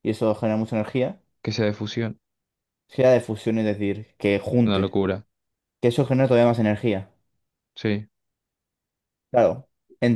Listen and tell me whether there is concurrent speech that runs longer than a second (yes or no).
no